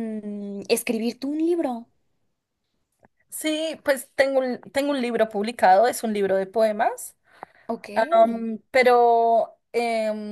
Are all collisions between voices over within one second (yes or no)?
yes